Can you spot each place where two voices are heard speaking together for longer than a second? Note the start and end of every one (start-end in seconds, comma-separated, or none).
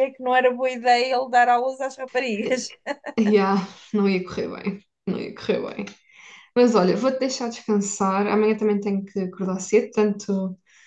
none